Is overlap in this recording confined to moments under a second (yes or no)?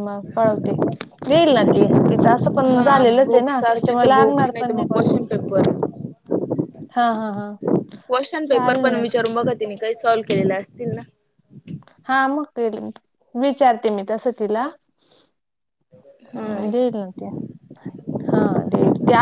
no